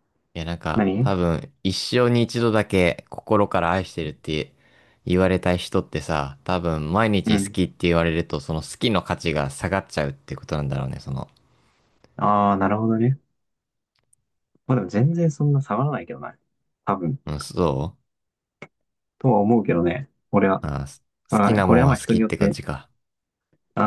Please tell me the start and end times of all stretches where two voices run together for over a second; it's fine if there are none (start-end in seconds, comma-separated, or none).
21.3-22.6